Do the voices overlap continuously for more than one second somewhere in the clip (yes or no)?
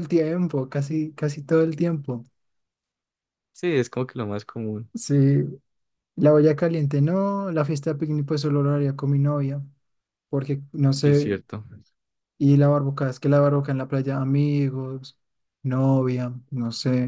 no